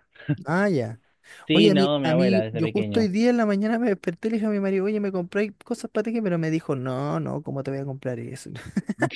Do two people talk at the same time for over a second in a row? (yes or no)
yes